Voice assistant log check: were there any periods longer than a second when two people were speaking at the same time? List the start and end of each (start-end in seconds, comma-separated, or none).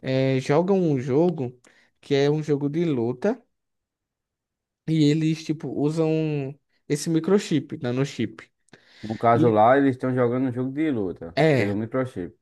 none